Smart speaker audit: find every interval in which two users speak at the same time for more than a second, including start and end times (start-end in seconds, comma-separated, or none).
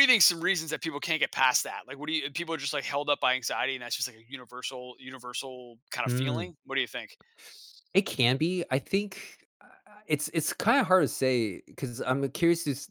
none